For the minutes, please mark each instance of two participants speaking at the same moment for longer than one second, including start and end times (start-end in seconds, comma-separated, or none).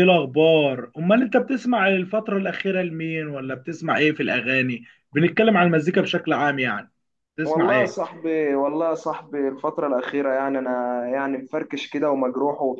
none